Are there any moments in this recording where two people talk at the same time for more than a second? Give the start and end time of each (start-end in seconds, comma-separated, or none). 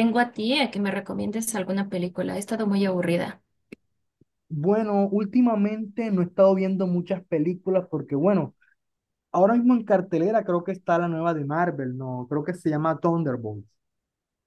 none